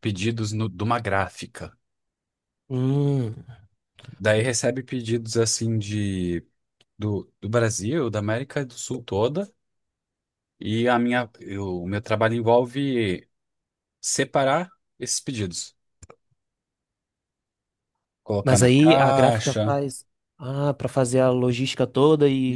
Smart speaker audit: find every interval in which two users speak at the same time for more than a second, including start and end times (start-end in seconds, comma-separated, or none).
18.4-19.8